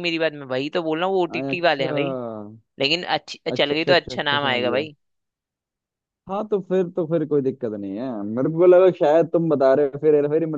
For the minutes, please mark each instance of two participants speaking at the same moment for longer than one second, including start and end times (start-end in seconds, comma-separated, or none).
3.5-4.9